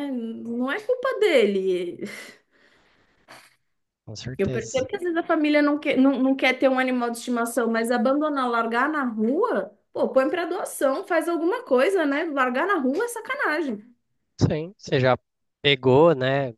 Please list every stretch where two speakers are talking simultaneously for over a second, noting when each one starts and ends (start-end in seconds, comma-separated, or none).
none